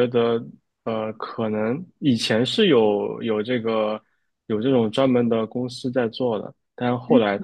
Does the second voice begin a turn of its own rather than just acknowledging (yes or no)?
no